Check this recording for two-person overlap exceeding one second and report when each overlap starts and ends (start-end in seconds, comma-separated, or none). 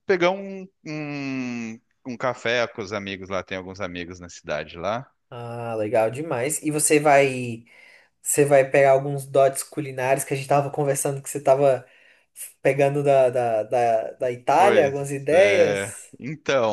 14.6-16.1